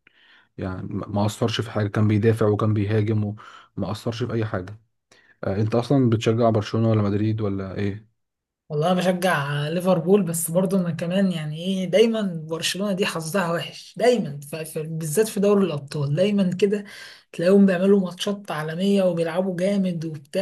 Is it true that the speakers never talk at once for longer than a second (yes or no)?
yes